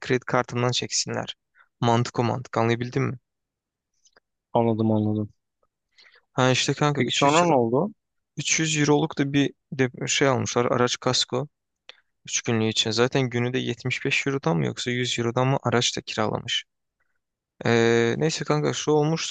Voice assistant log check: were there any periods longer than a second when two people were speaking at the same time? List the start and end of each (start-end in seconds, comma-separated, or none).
none